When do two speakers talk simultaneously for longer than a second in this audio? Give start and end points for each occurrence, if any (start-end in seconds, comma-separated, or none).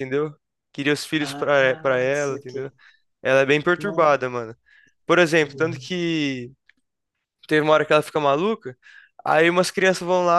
1.2-2.7